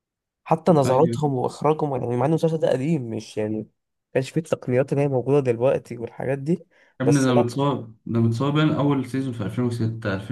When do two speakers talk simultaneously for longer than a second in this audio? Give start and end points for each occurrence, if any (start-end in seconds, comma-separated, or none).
none